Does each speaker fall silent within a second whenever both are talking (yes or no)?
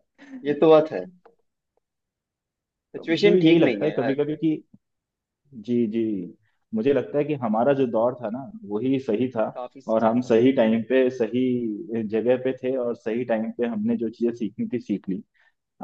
no